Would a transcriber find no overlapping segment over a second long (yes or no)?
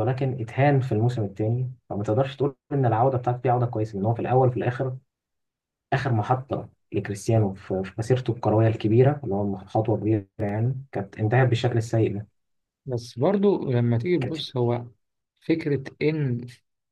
yes